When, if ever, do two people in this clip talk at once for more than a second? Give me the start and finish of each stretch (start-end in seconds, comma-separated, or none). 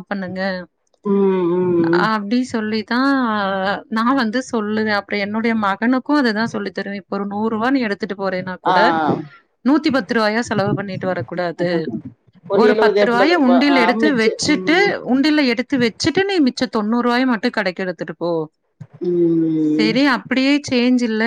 12.7-14.8